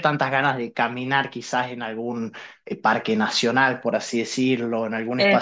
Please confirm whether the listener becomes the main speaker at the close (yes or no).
no